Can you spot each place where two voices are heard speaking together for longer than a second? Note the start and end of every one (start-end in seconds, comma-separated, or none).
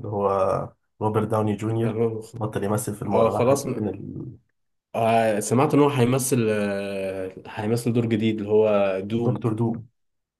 none